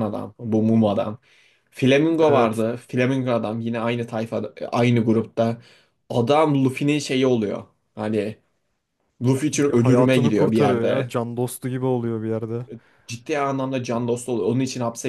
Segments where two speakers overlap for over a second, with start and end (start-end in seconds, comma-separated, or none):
9.5-11.1